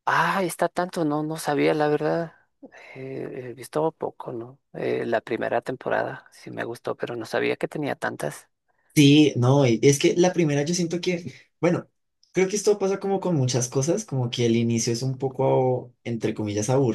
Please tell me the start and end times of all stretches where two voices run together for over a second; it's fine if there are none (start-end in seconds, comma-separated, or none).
none